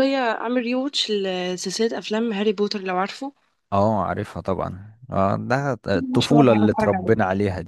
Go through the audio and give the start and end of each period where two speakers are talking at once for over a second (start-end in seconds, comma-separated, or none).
5.9-7.2